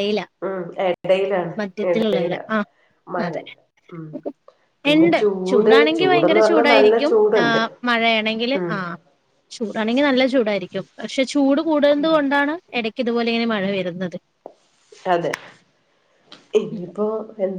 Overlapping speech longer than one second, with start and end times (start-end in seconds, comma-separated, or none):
4.9-7.5